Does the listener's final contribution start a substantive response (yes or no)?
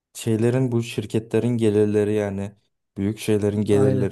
no